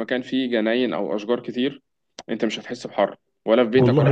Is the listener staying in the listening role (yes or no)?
no